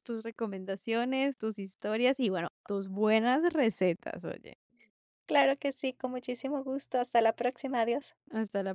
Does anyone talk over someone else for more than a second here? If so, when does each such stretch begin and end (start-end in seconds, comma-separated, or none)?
none